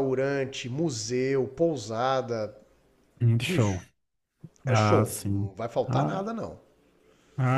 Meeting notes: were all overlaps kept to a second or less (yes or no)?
no